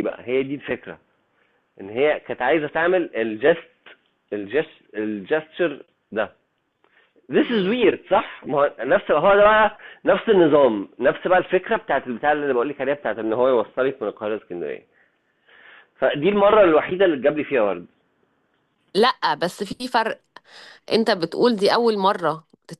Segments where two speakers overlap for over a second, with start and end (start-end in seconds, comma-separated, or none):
none